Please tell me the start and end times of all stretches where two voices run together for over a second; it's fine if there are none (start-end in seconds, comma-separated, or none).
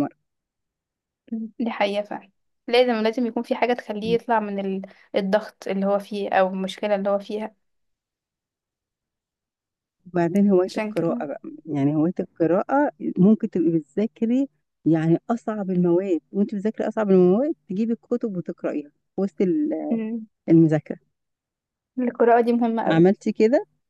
none